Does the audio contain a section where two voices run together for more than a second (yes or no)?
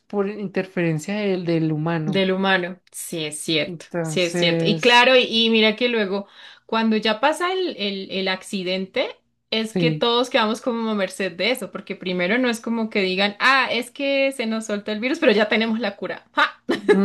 yes